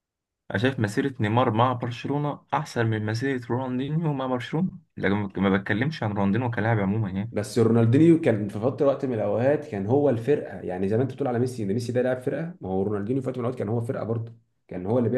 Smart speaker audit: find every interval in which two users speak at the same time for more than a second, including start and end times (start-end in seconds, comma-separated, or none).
none